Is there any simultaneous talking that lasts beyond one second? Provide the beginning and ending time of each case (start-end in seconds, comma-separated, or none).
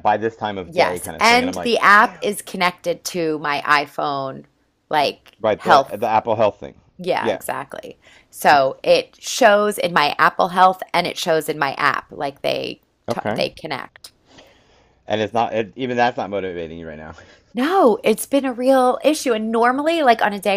0.6-2.3